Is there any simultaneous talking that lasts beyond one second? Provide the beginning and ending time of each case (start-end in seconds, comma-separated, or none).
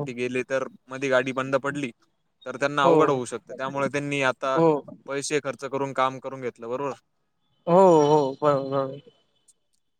none